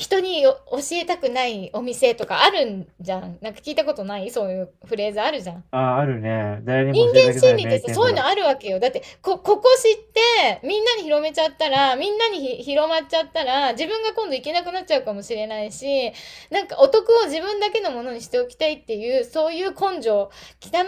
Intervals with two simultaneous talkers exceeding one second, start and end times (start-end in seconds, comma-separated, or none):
6.9-8.3